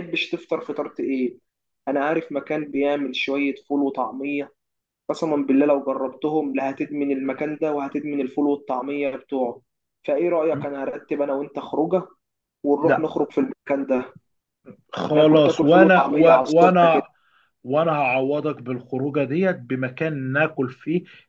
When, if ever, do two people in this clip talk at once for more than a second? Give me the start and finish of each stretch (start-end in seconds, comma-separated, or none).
15.1-17.0